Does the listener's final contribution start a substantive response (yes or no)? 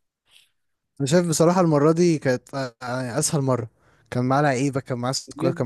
yes